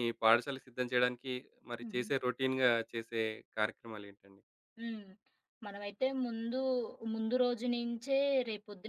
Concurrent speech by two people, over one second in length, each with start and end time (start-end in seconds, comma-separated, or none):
none